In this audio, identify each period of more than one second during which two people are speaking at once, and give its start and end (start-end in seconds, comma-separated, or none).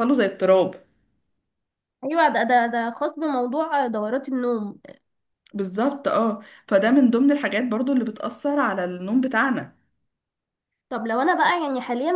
none